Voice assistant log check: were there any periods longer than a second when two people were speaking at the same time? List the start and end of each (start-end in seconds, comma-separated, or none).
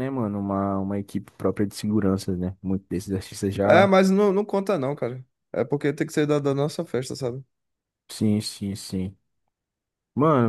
none